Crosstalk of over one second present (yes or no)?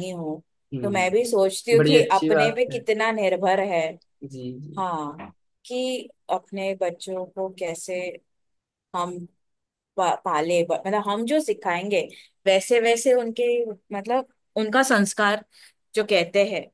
yes